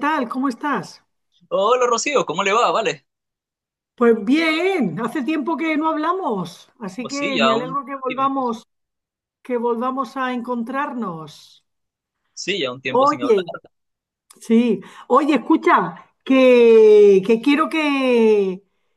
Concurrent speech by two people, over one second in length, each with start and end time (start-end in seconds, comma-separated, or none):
7.0-8.4